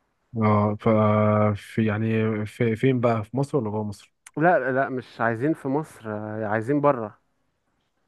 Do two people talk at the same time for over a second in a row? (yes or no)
no